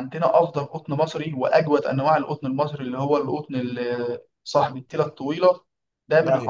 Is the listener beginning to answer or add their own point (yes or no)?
no